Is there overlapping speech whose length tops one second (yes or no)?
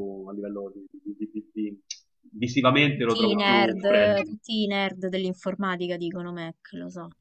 yes